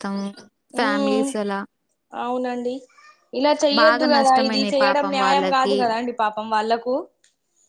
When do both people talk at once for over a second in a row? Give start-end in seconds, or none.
3.8-5.8